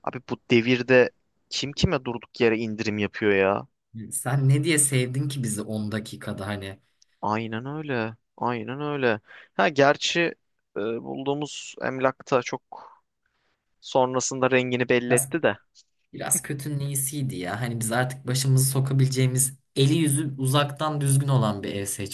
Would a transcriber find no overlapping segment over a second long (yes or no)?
yes